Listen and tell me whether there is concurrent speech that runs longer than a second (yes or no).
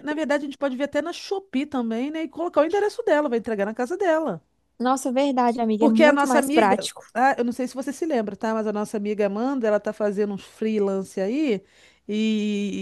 yes